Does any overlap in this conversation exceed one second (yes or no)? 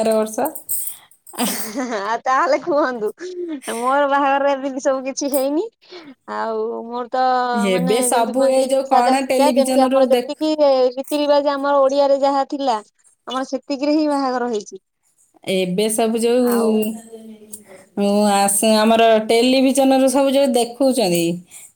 yes